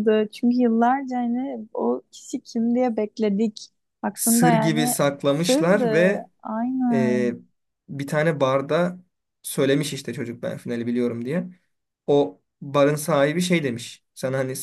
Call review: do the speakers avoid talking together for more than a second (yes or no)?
no